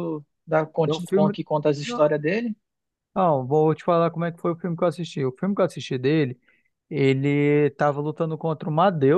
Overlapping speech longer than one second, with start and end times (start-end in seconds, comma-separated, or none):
none